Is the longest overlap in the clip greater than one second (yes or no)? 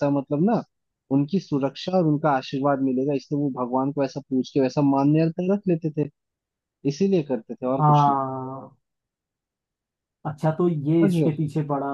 no